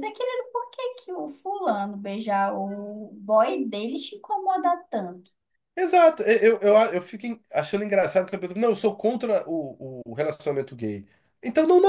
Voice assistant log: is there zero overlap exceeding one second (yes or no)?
yes